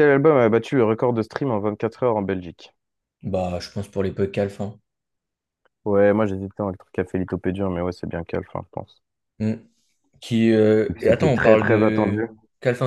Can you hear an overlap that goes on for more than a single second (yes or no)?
yes